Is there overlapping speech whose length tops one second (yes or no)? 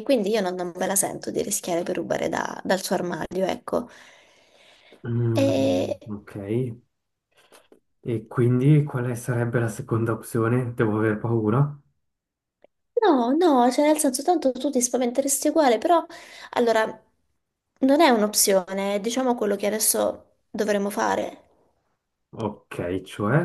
no